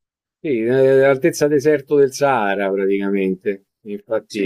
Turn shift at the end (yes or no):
yes